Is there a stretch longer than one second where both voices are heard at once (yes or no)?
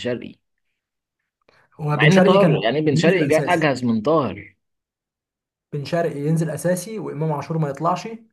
yes